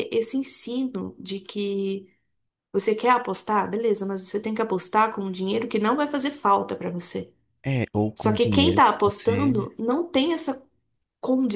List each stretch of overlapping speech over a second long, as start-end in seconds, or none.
8.2-9.7